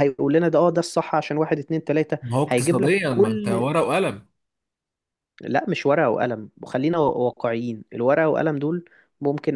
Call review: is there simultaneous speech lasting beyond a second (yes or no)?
yes